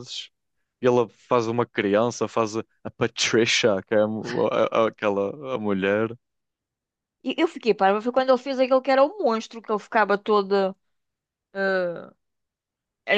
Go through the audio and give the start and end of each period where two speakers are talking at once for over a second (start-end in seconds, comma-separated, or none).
none